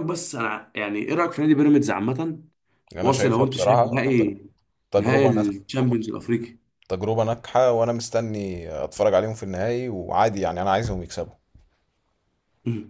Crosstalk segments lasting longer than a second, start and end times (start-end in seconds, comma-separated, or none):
3.0-4.3